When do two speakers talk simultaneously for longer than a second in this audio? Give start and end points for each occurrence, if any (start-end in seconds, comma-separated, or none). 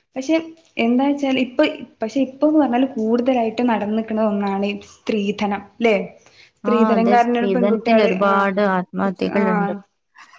6.7-8.5